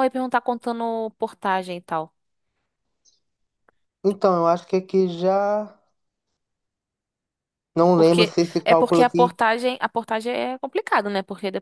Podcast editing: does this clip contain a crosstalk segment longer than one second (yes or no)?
yes